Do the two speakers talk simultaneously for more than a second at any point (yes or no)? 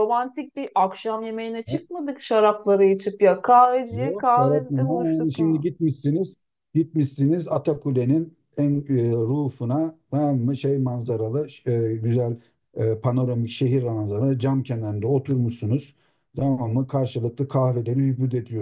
yes